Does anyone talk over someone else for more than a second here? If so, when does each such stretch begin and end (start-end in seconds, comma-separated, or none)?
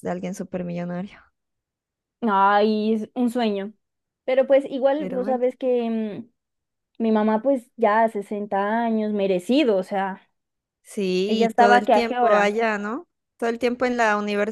11.3-12.6